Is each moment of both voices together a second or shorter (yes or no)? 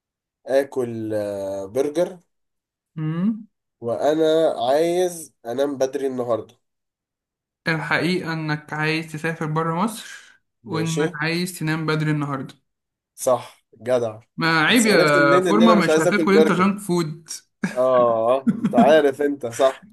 no